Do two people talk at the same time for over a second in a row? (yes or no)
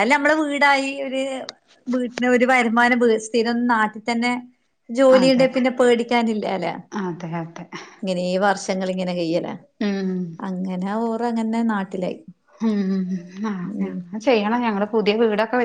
no